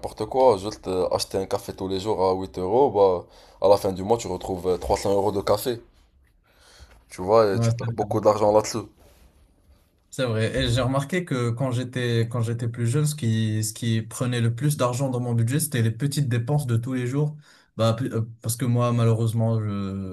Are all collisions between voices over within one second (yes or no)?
yes